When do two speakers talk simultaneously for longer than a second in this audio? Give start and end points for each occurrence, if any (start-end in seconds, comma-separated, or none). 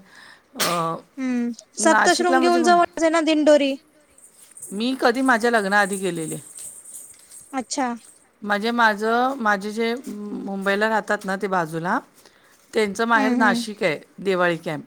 none